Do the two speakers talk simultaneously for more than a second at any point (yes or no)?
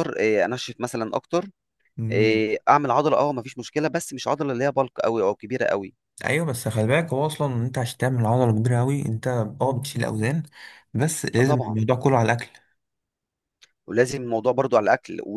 no